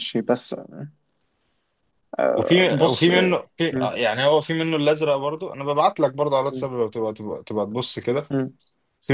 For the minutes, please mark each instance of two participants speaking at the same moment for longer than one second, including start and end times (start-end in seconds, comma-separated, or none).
none